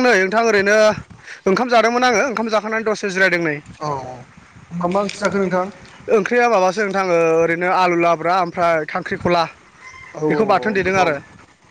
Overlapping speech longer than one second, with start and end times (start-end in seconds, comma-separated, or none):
none